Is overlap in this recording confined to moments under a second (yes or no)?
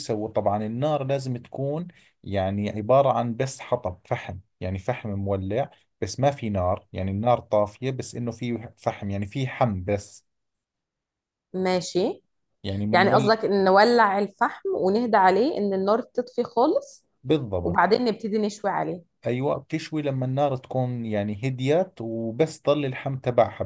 yes